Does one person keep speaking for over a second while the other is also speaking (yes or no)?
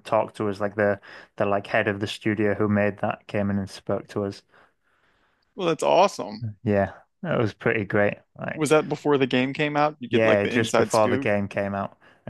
yes